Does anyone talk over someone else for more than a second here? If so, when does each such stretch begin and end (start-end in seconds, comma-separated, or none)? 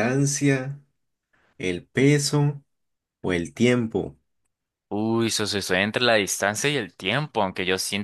none